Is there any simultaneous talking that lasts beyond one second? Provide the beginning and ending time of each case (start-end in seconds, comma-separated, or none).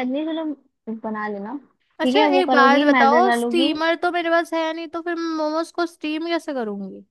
2.0-3.7